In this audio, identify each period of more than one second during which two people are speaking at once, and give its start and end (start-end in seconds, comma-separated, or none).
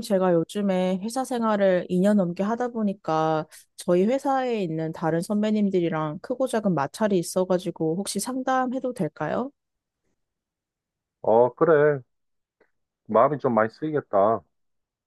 none